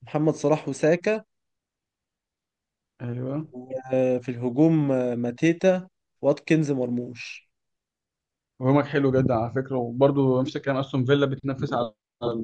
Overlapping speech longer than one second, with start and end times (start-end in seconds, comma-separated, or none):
none